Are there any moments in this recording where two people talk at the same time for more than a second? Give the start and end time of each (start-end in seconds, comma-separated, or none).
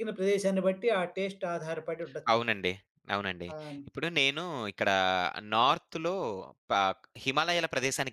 none